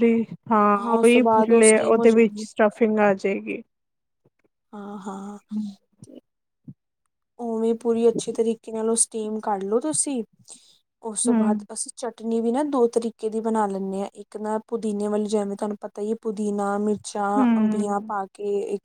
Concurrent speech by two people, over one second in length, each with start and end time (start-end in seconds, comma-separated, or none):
1.0-2.5